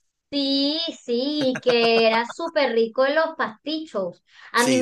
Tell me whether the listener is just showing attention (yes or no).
yes